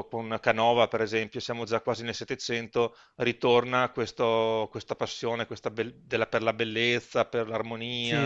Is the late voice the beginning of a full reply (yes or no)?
yes